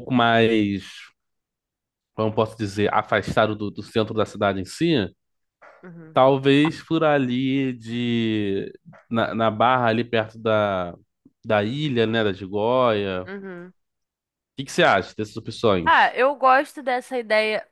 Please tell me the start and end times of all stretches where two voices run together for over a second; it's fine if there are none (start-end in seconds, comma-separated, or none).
none